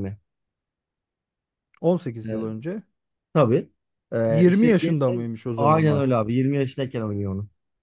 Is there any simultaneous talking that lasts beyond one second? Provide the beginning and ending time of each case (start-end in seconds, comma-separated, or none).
4.3-6.1